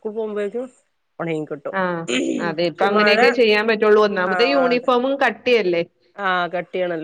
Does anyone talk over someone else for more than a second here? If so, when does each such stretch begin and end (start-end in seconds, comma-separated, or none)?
none